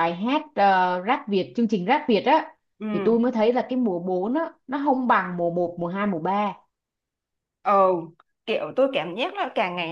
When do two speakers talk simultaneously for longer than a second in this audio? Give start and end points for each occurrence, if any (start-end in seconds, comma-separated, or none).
none